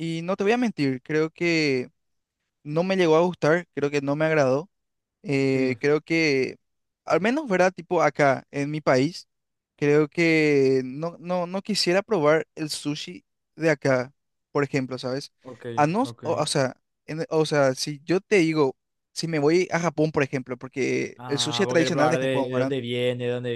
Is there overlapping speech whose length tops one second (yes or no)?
yes